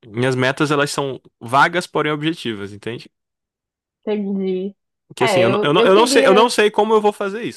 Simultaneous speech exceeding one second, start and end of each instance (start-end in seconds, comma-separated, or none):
5.2-6.5